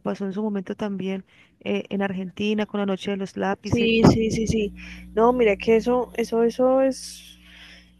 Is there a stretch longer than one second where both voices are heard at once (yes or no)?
no